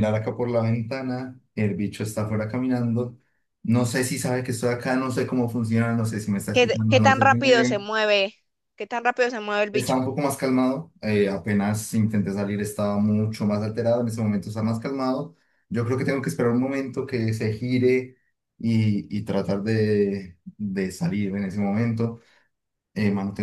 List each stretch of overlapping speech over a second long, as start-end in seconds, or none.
6.5-7.8